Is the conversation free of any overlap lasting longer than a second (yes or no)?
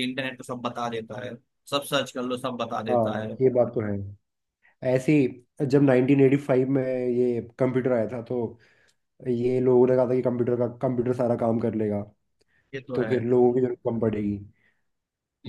yes